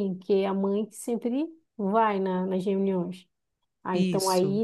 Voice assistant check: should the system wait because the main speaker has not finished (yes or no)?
yes